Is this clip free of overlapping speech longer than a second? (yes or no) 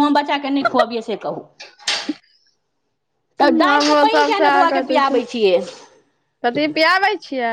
no